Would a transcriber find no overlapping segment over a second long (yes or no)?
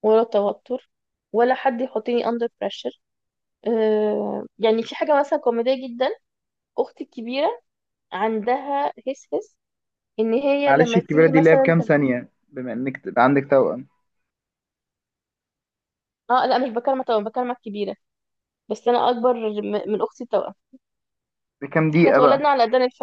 no